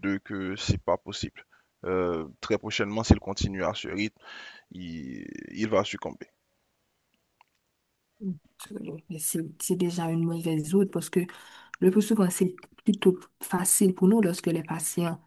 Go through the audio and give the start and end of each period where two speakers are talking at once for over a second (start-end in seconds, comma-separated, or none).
none